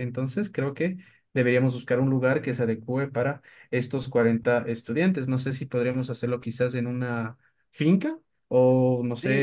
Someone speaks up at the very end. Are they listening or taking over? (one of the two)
taking over